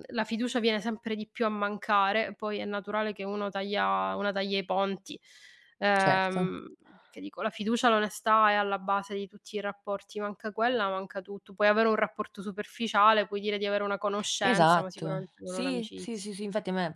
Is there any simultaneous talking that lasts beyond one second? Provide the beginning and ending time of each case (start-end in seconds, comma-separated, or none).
14.4-16.3